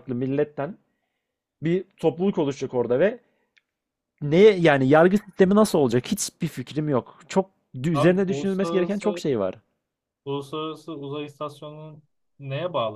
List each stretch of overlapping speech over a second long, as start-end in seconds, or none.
7.9-9.2